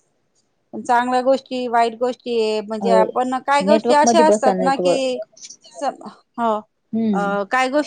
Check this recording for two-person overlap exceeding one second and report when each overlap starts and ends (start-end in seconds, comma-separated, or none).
3.7-5.0